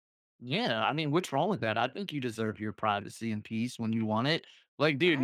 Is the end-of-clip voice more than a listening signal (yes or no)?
no